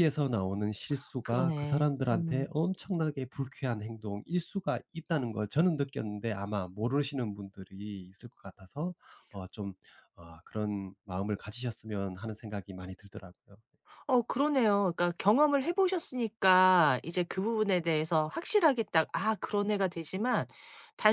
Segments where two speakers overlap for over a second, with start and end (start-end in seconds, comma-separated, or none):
1.2-2.5